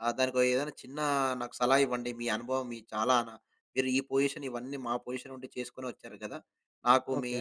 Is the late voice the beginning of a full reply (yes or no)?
no